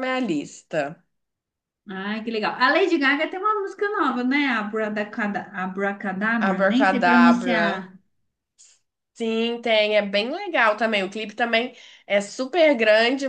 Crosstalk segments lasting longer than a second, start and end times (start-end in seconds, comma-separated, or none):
6.4-7.6